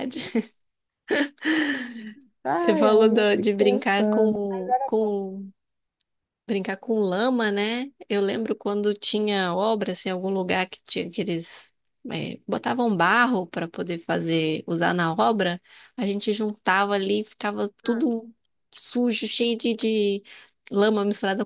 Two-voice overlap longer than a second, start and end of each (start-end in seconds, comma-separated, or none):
2.5-4.4